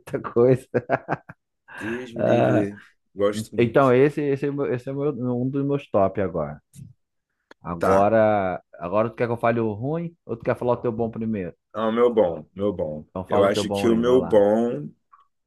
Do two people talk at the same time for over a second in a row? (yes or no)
yes